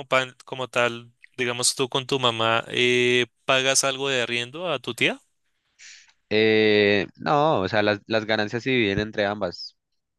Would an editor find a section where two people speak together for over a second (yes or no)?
no